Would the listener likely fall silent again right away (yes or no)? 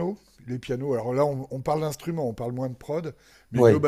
yes